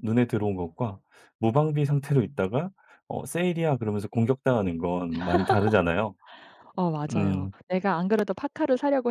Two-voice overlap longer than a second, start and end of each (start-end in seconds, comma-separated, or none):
none